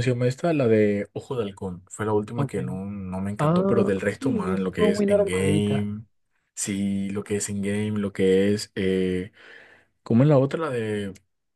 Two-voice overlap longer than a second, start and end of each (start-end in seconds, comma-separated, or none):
3.4-5.9